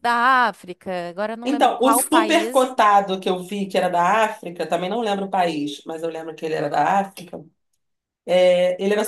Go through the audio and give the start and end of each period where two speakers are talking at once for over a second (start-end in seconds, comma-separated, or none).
1.4-2.7